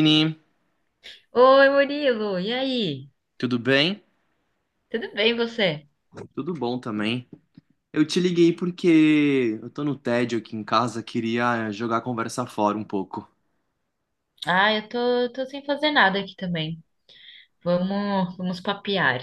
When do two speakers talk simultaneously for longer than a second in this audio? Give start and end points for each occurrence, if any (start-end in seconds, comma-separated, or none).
none